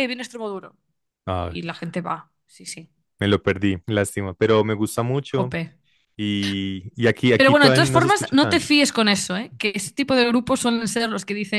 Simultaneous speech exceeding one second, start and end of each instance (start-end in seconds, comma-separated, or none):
7.3-8.7